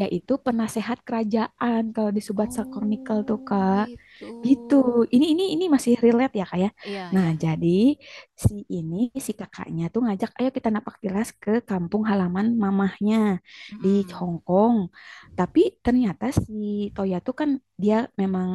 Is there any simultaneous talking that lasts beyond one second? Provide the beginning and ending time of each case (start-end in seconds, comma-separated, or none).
2.4-3.9